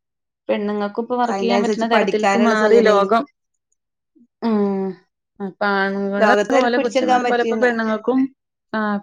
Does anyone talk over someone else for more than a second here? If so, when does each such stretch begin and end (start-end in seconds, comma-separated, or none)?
1.3-3.0, 6.2-7.7